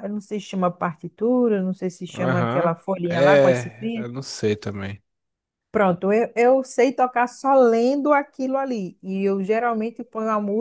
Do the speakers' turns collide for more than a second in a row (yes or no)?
yes